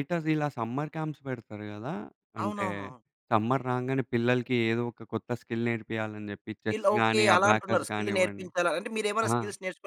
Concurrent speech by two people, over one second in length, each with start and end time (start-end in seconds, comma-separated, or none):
6.6-8.5